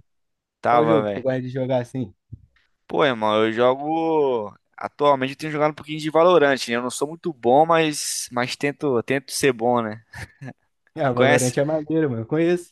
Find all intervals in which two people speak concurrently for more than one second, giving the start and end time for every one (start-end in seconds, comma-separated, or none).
none